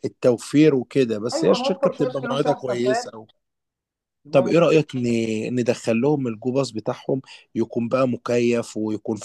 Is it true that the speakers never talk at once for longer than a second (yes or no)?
no